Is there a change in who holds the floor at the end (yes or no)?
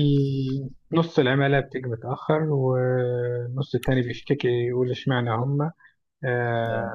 no